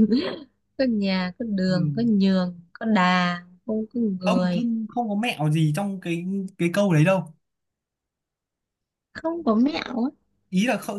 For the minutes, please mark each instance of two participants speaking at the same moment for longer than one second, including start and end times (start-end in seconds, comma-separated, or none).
none